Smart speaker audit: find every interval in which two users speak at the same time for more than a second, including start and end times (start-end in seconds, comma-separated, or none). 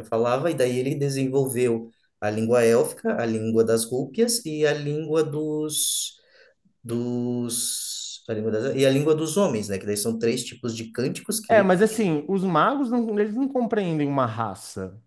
none